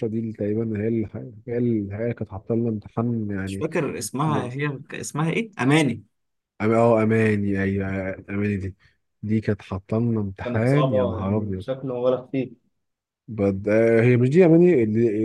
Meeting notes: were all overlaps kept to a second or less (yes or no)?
no